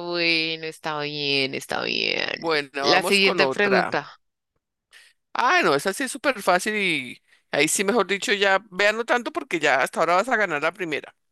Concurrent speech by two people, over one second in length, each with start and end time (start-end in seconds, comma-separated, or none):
2.8-4.0